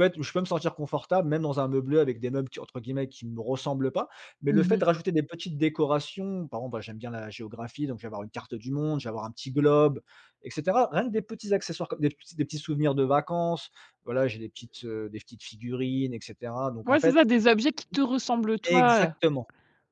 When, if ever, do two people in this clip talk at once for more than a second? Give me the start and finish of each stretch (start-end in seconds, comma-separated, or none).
none